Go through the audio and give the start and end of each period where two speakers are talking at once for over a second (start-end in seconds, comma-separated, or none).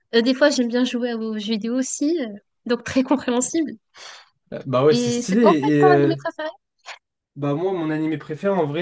4.9-6.2